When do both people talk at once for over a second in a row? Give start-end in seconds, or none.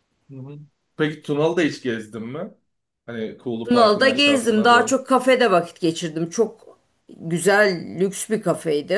3.6-5.0